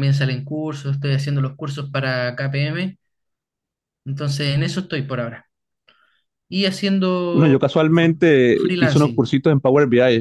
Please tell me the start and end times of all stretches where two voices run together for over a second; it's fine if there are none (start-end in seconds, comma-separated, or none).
7.3-9.3